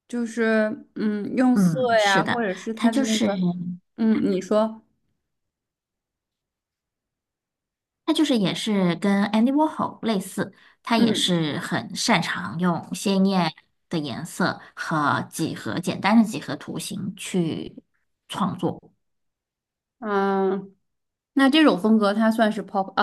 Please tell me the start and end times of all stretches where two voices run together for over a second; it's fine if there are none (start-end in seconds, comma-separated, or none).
1.5-3.3